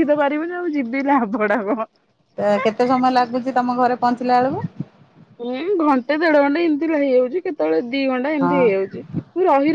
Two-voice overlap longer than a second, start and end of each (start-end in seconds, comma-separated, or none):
none